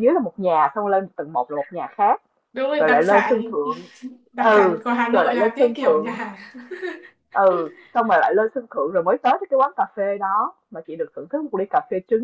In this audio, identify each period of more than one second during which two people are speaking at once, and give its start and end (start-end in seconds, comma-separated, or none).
4.3-6.2